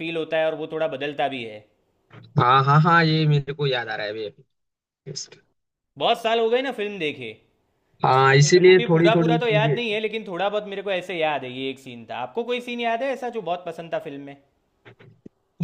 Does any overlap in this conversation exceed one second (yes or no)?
yes